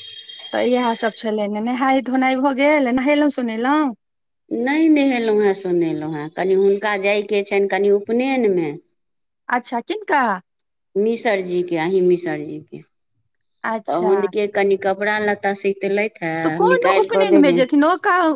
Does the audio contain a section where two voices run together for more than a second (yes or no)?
no